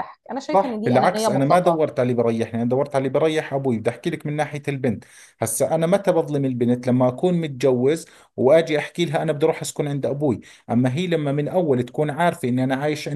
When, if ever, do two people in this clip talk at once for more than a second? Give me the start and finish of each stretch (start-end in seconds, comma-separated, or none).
0.5-1.8